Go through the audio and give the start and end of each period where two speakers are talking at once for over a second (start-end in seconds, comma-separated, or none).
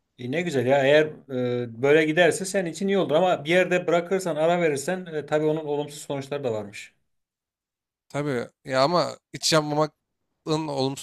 none